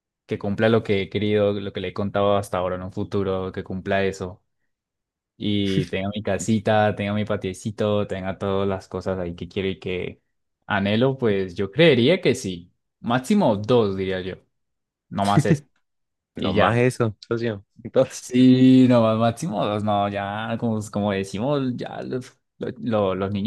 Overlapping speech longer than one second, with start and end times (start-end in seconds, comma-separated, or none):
none